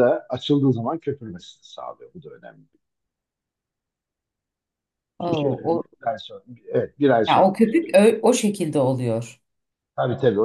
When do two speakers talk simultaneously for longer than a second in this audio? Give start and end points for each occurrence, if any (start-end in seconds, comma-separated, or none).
none